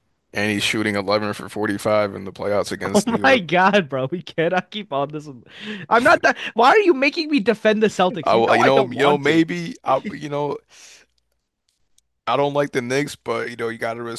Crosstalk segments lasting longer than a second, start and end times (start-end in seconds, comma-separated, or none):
8.2-9.4